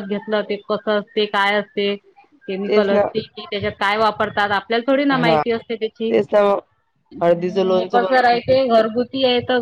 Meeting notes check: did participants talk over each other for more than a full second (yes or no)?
yes